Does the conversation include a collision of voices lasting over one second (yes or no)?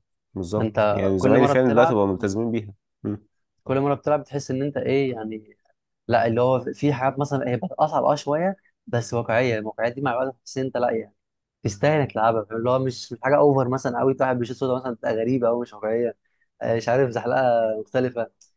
yes